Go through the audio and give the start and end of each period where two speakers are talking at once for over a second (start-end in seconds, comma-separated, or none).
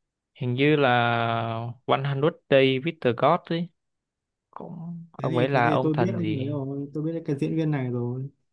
5.2-6.5